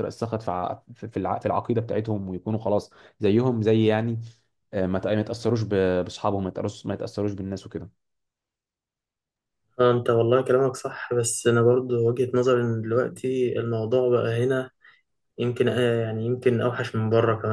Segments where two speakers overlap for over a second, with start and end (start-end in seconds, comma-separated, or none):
none